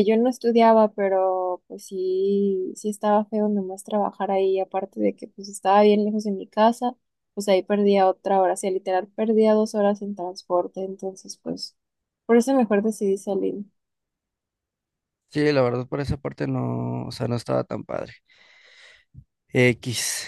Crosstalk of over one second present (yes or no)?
no